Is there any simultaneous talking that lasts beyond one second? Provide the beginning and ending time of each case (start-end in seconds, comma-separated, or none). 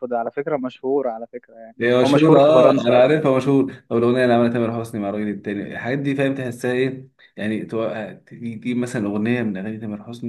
1.8-3.3